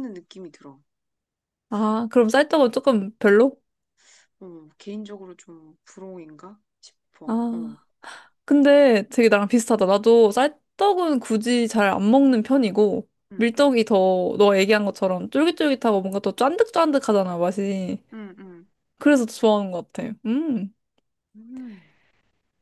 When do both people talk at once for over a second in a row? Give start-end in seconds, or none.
none